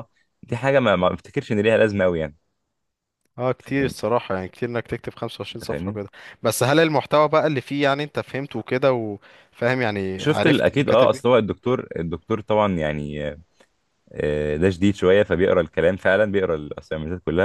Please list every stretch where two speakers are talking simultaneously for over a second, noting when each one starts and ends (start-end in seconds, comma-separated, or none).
10.2-11.4